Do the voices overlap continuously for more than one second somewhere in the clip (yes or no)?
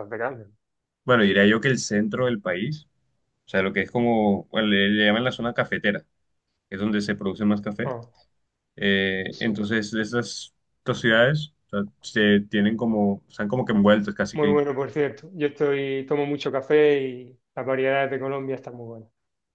no